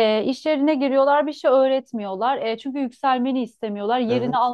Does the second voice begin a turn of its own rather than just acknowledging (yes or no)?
no